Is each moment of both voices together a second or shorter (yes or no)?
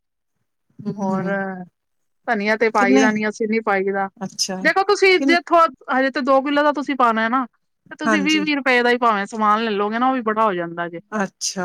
yes